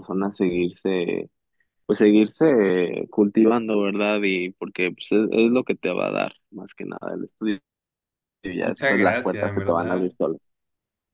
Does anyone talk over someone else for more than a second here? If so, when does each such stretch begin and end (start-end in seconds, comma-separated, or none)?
8.6-10.1